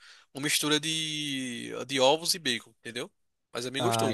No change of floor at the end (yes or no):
no